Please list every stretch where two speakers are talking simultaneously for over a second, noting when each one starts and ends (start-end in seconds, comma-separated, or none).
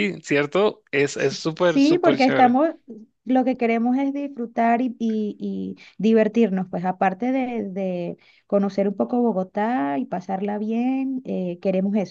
1.1-2.6